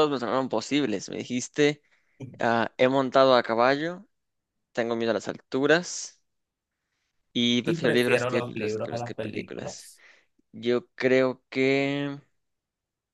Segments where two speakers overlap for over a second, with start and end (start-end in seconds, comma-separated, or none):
7.6-9.9